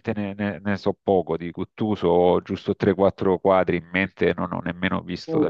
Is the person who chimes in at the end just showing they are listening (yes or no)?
yes